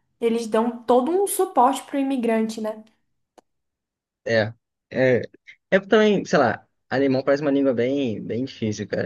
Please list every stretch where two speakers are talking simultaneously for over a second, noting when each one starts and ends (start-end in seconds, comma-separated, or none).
none